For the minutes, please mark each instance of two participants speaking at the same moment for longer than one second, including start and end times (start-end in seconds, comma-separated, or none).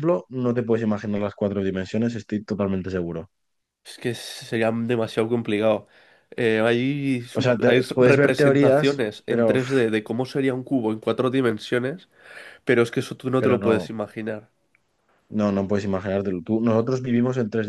7.3-9.7